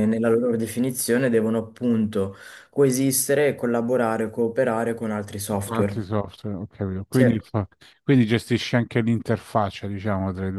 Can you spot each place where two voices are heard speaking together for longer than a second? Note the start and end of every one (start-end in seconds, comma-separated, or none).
none